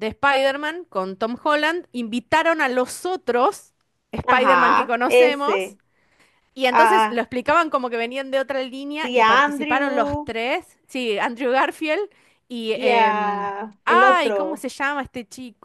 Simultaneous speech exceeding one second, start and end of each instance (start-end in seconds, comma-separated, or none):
4.3-5.8, 8.9-10.3, 12.7-14.7